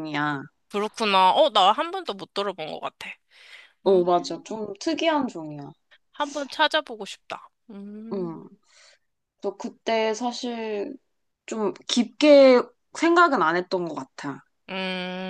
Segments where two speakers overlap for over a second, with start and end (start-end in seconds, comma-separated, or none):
none